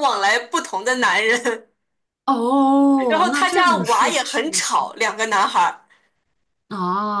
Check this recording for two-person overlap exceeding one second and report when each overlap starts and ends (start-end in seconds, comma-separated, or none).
3.1-4.6